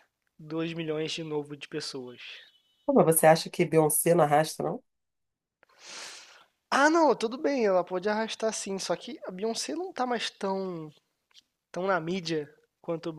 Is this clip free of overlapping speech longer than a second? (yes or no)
yes